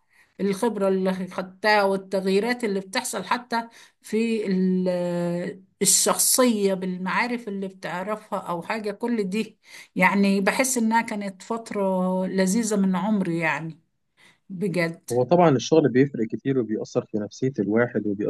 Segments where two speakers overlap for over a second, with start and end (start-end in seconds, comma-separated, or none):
none